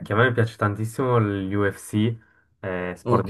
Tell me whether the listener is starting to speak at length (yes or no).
no